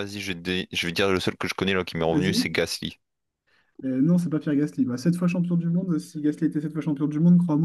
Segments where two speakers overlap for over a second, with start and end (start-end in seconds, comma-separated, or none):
none